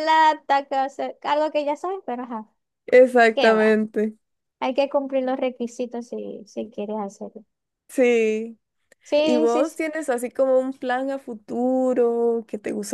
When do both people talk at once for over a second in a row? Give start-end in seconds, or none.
none